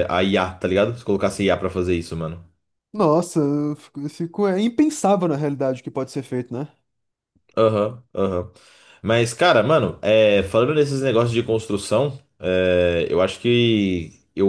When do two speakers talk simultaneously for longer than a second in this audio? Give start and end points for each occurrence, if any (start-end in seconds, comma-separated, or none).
none